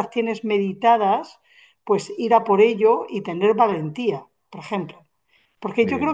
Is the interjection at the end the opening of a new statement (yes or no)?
no